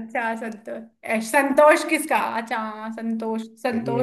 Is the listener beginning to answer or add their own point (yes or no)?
no